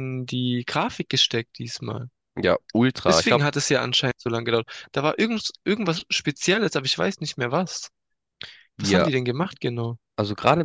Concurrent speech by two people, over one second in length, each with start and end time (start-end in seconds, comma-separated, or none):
none